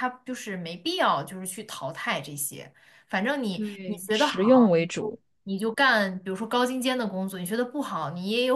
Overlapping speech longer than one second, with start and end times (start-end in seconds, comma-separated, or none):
3.5-5.2